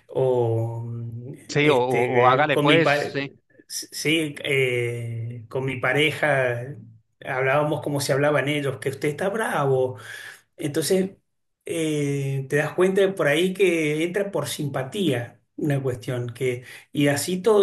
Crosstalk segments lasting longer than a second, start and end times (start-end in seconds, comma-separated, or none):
1.5-3.1